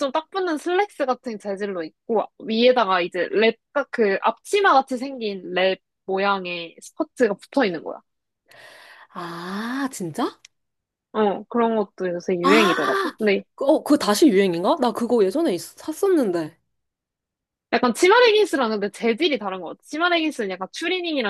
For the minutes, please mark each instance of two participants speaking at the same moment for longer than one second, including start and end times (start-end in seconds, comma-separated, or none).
none